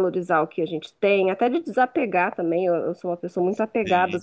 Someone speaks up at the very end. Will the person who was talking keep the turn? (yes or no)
yes